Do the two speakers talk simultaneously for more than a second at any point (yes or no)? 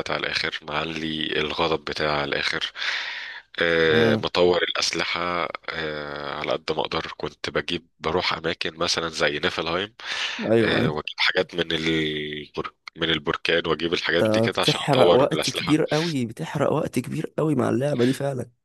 yes